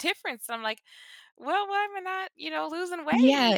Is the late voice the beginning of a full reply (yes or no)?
yes